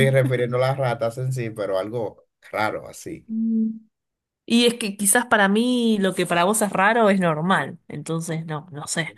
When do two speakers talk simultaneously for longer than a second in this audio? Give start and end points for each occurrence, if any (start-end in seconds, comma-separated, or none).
none